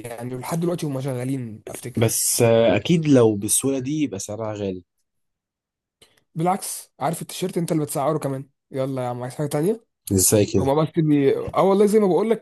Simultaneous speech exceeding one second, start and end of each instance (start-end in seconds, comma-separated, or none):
none